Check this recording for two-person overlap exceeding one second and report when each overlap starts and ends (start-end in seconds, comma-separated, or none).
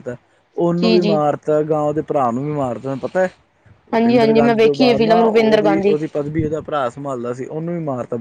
3.9-5.9